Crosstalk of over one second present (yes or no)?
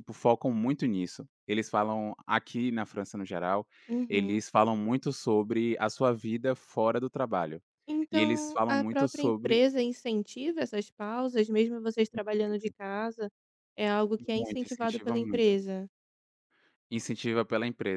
yes